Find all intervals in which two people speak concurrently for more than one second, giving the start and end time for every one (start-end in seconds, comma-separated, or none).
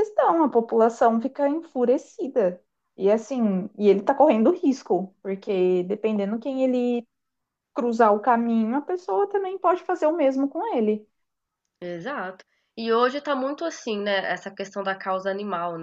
none